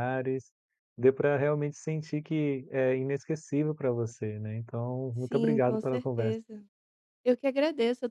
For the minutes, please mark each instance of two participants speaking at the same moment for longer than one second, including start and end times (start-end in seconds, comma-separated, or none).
5.2-6.4